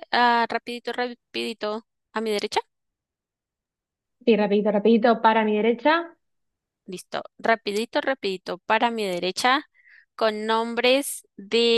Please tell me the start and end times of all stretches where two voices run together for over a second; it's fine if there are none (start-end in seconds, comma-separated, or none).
none